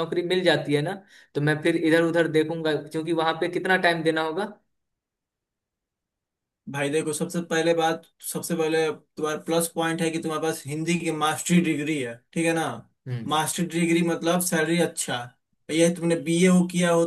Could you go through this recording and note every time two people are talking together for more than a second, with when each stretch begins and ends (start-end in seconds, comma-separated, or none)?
none